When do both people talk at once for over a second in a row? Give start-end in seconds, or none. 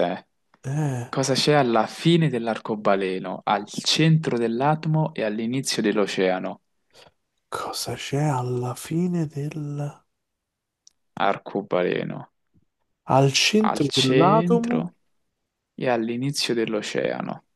13.6-14.9